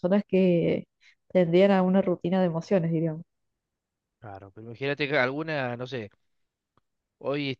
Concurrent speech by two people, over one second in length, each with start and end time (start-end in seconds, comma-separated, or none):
none